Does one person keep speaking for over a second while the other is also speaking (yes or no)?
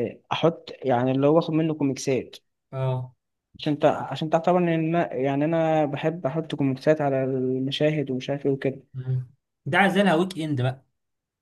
no